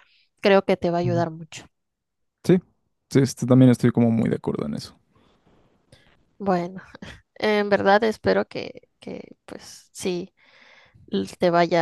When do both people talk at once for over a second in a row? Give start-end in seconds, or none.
none